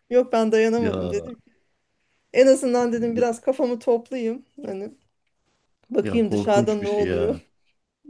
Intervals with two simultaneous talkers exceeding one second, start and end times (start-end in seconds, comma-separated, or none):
6.0-7.4